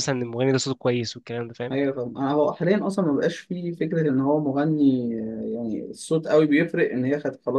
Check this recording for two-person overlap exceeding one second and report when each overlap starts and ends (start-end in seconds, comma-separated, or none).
none